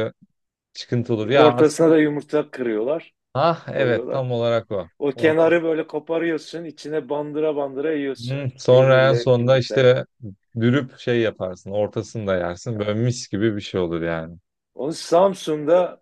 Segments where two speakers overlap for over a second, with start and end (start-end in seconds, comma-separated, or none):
8.2-10.0